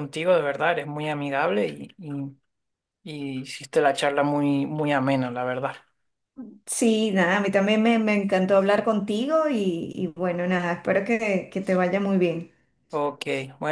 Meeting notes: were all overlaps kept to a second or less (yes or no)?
yes